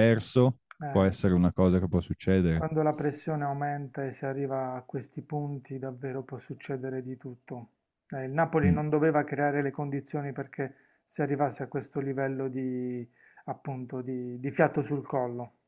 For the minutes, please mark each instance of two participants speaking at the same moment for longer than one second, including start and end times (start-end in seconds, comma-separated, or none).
none